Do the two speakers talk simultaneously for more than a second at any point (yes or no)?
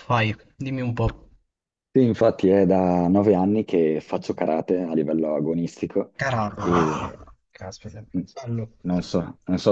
no